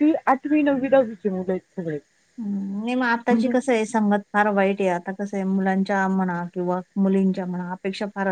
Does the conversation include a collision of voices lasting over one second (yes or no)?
no